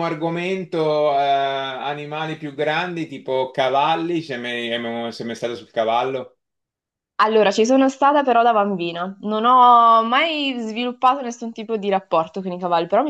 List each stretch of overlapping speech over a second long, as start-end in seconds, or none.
none